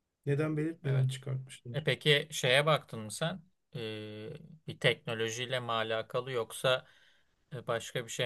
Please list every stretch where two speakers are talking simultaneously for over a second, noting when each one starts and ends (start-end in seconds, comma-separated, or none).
none